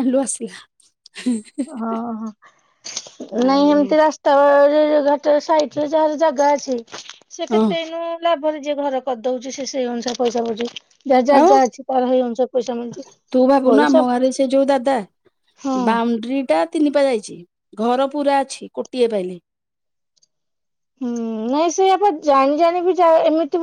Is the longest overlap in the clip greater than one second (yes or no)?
no